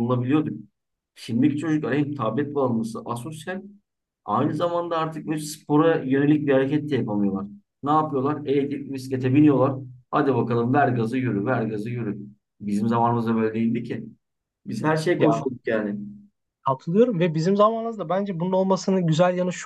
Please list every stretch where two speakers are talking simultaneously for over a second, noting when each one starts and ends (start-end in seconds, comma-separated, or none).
none